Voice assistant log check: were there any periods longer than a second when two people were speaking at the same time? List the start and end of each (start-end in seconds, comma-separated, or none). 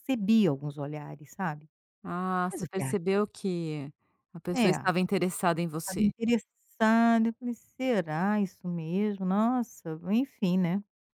none